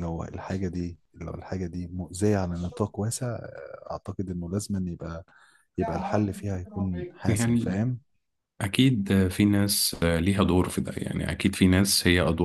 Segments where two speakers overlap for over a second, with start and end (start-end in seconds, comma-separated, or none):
none